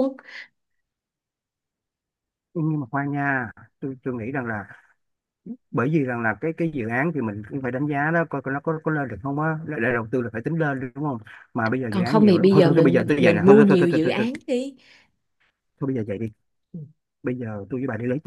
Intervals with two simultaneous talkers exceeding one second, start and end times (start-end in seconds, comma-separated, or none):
11.9-14.3